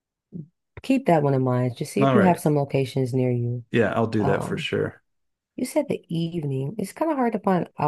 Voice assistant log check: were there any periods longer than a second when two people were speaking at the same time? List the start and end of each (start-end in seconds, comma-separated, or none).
none